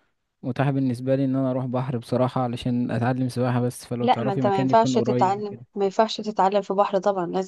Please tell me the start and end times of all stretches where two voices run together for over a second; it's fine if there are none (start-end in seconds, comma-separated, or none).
4.0-5.6